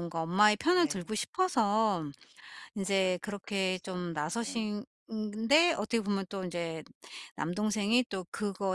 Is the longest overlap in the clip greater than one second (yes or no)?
yes